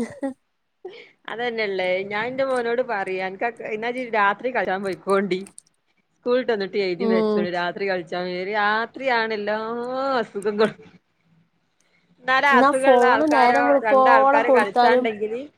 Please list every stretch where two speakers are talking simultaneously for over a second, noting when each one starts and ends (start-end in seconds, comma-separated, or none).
12.5-15.1